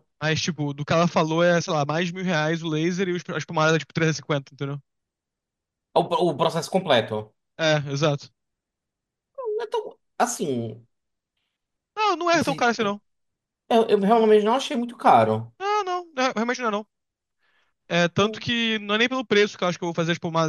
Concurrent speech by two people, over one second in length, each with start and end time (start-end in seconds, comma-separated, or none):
none